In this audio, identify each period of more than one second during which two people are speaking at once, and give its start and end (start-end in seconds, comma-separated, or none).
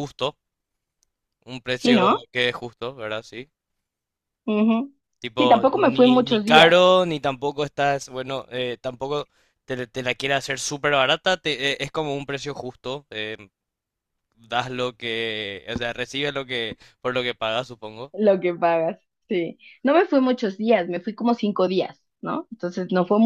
5.4-6.8